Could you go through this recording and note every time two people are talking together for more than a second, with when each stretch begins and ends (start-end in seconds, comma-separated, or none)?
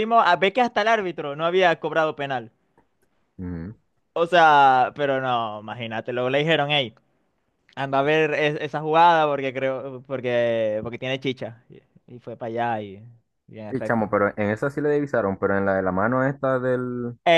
none